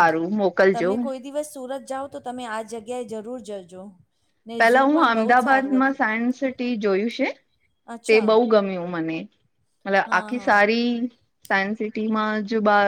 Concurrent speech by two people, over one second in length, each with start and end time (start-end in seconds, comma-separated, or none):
4.6-6.0